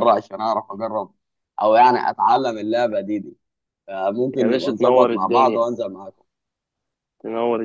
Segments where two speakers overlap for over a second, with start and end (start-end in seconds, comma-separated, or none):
4.4-5.7